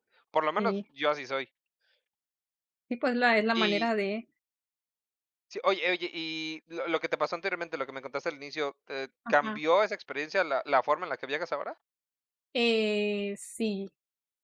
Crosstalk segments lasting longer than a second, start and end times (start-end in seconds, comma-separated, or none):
none